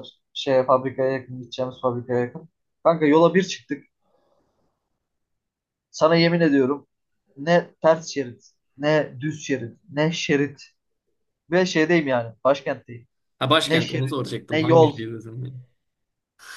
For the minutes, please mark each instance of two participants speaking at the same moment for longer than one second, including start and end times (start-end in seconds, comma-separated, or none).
13.6-15.0